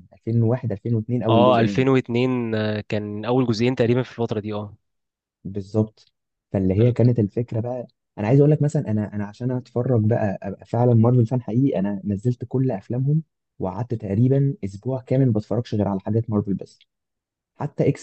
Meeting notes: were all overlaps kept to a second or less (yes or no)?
yes